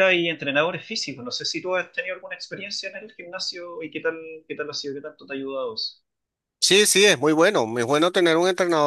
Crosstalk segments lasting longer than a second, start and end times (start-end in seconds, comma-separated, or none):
none